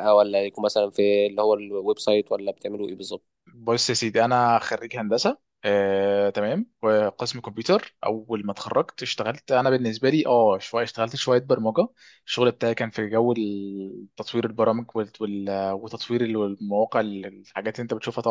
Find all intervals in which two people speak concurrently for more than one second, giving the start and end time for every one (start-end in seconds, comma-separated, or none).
none